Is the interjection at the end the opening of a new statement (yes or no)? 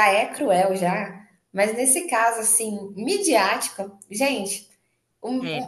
no